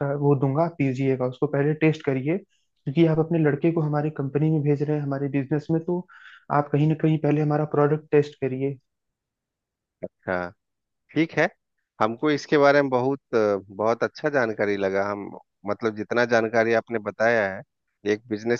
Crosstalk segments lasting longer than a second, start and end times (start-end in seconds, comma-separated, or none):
none